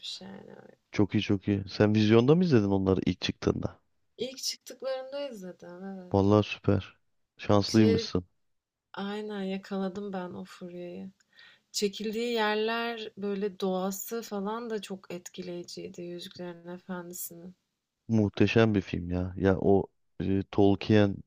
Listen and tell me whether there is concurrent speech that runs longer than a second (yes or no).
no